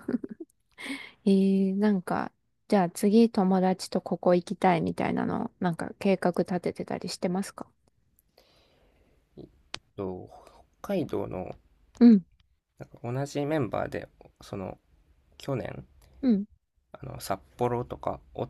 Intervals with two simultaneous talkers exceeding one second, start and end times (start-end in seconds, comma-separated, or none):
none